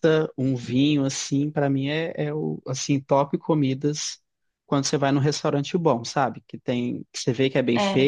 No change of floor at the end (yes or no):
yes